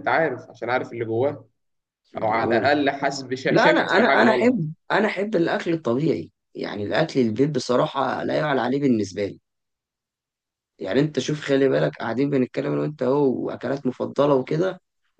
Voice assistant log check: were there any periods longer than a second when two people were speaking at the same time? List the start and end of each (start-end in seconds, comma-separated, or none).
3.5-4.7